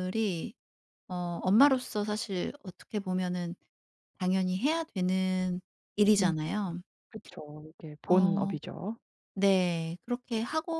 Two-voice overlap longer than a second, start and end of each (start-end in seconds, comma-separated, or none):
none